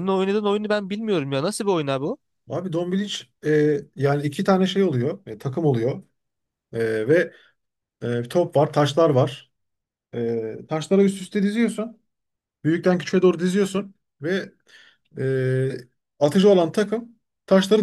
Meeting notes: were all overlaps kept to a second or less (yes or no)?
yes